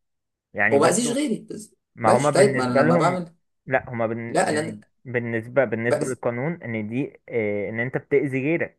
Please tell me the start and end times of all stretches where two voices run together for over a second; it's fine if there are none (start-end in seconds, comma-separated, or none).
1.9-3.2